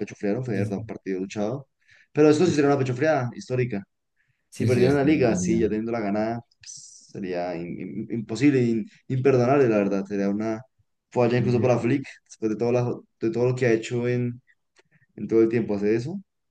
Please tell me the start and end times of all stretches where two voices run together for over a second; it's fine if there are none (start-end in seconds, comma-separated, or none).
4.5-5.8